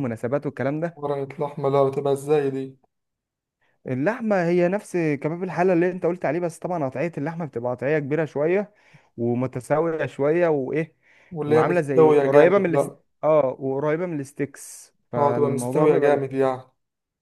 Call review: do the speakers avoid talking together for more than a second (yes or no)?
no